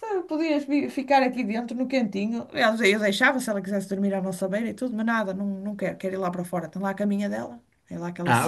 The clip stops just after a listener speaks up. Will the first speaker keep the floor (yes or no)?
no